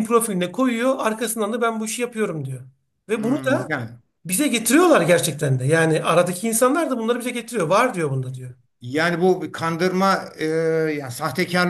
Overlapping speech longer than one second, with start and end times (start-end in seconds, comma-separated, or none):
none